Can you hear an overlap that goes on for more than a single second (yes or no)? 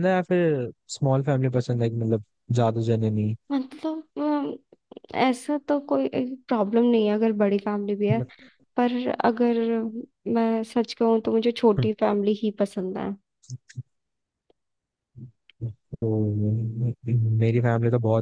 no